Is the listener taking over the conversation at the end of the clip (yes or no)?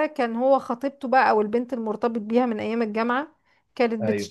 no